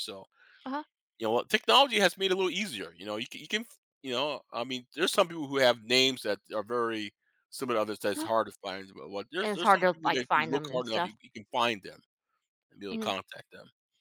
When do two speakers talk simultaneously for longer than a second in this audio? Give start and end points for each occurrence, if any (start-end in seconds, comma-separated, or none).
9.4-11.2